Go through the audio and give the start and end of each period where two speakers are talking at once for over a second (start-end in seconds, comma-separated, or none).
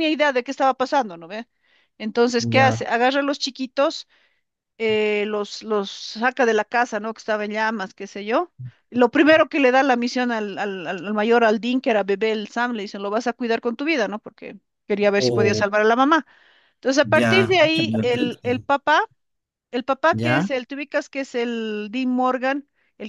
17.0-18.5